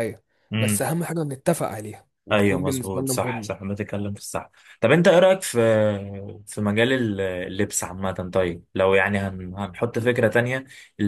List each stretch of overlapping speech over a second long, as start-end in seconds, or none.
2.3-3.6